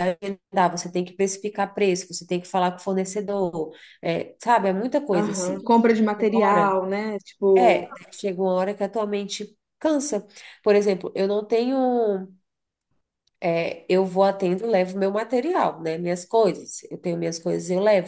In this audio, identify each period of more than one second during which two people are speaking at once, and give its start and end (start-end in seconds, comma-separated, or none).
5.1-6.8